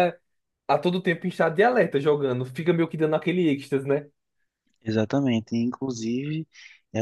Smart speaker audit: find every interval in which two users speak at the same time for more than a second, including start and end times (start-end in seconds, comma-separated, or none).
none